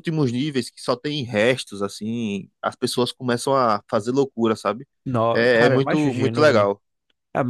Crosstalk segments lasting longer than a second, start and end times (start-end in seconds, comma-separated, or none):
5.3-6.7